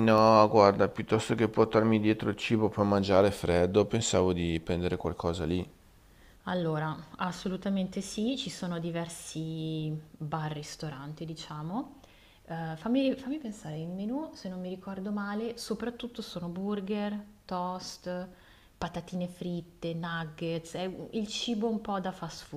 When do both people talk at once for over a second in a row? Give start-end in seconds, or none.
none